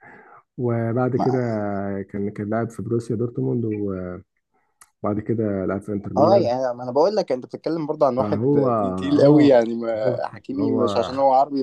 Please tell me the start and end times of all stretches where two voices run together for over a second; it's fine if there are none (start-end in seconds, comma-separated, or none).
8.2-10.8